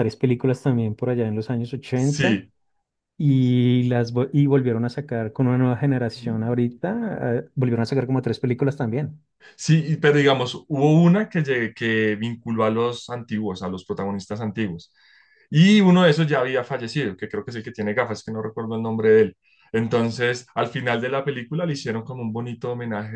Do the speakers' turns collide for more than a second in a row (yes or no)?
no